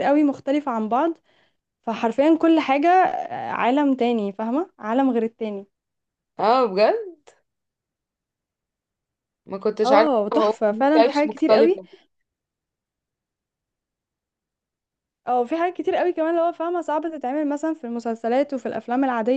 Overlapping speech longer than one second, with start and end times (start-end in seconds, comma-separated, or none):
9.8-11.8